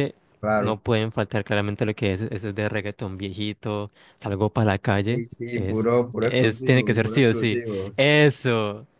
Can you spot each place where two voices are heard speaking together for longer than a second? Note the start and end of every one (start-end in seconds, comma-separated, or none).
5.0-7.9